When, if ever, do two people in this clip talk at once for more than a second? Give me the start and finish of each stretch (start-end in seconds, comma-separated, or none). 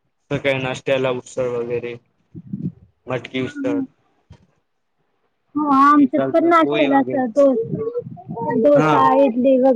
5.9-7.4